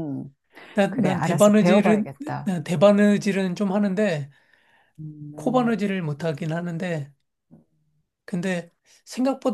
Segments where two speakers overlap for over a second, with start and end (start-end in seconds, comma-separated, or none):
0.9-2.5